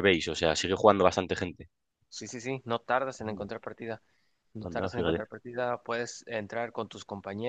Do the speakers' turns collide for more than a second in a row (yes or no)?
no